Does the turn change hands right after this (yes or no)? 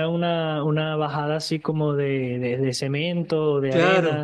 yes